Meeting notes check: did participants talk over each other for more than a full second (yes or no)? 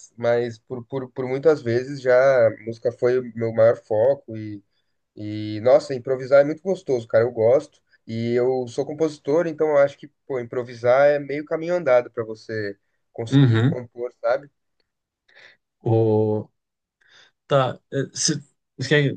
no